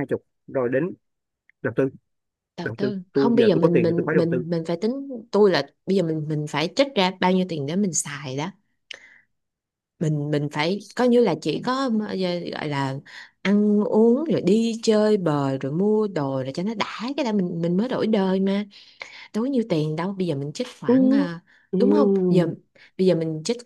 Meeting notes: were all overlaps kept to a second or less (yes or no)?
no